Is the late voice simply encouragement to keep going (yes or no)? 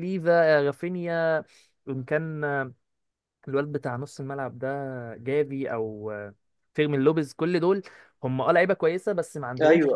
yes